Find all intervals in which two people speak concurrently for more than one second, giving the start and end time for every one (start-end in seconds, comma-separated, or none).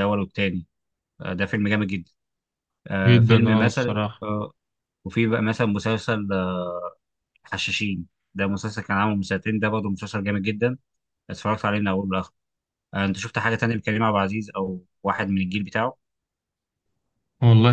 3.0-4.2